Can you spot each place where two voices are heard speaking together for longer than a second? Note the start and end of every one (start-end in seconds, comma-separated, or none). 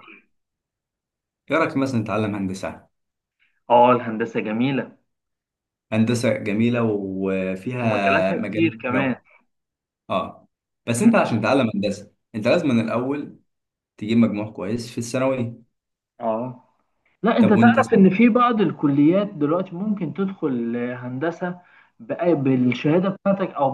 7.8-9.2